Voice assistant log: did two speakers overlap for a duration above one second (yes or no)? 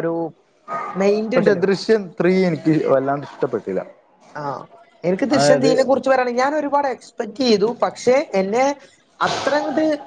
no